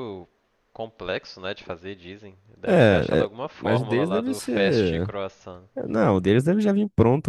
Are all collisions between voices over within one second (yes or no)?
no